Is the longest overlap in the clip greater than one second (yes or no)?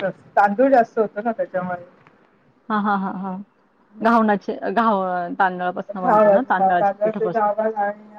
yes